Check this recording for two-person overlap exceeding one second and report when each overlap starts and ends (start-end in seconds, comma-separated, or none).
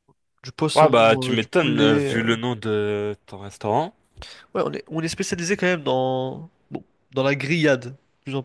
0.8-2.2